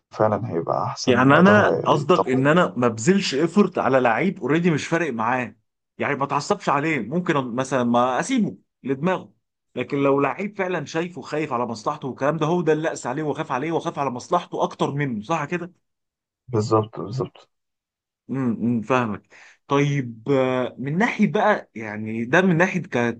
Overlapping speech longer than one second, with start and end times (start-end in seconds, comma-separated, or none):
1.1-2.4